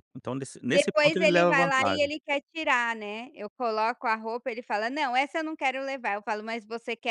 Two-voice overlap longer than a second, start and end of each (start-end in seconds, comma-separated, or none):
0.7-2.1